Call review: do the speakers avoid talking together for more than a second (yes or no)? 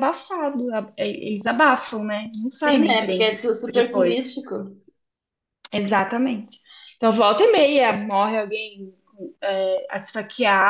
no